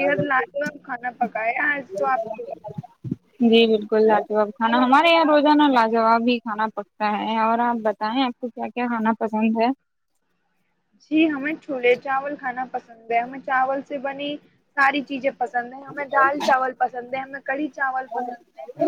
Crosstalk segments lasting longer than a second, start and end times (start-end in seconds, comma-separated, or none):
none